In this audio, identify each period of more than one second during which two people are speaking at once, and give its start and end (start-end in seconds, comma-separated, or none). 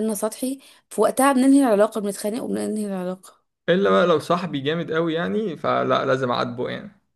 none